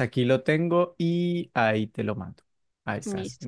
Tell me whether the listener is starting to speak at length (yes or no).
yes